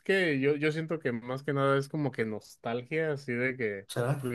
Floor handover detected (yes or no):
no